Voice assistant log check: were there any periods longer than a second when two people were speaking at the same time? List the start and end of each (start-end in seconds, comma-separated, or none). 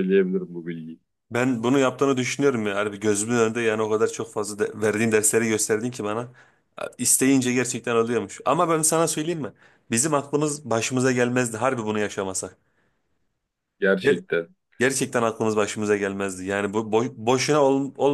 none